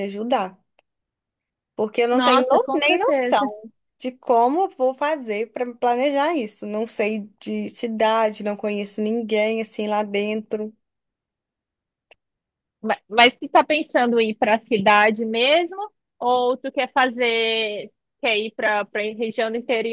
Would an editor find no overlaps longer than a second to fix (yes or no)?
no